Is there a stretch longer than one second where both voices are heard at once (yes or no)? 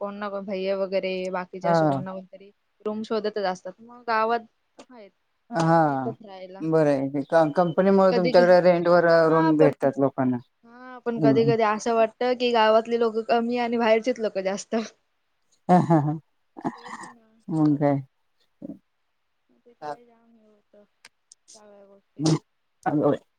no